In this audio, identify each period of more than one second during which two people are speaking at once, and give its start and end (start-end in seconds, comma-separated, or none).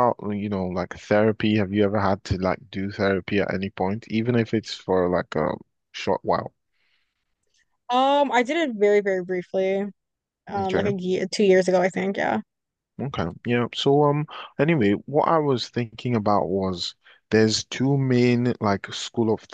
none